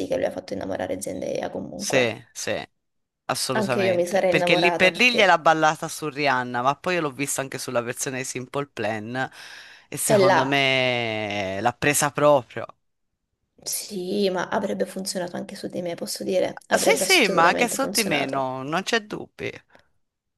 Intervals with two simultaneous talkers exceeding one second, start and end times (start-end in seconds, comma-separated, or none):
3.5-5.4, 16.8-18.4